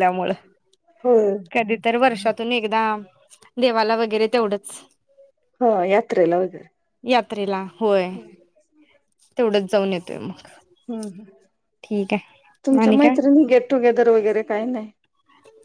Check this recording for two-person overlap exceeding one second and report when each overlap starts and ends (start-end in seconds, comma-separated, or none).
none